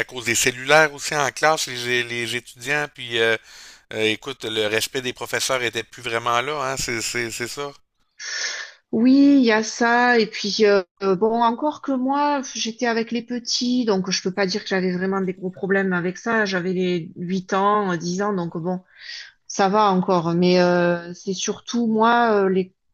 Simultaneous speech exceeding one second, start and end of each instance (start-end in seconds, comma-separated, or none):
none